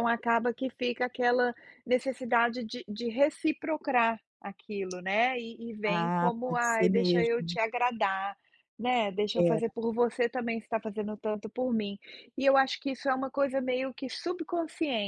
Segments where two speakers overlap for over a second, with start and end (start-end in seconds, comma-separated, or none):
5.8-7.6